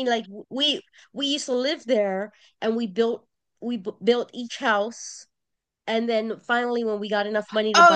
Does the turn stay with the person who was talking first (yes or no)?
no